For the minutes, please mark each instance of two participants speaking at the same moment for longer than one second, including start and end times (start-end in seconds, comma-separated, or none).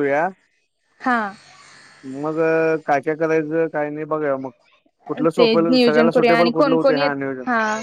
5.4-7.1